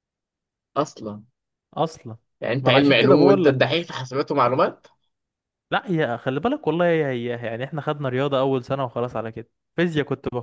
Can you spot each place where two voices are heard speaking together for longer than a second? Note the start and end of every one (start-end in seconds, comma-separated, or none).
2.6-3.8